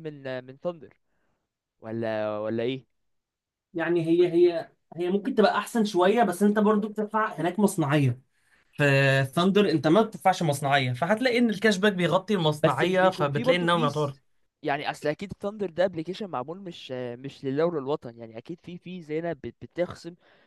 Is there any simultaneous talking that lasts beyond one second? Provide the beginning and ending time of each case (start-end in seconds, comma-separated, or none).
12.6-14.2